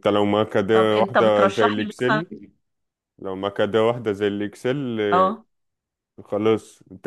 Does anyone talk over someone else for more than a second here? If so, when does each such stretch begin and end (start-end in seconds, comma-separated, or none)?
0.7-2.2